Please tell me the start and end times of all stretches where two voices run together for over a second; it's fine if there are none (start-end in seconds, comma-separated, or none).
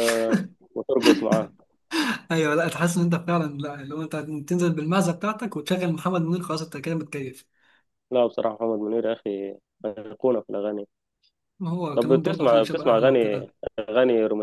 11.9-13.5